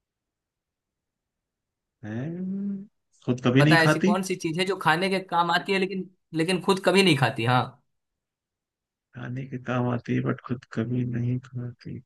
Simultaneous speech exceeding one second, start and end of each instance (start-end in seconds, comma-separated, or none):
none